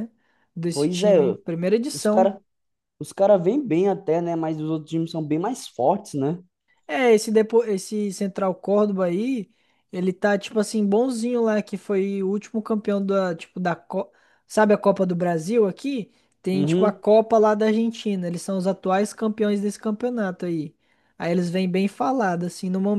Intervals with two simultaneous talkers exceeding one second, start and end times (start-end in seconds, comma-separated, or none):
none